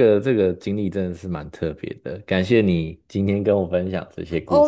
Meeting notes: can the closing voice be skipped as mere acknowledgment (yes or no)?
no